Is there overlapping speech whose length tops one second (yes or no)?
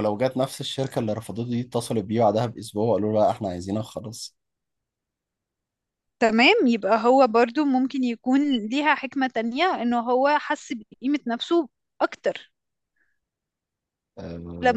no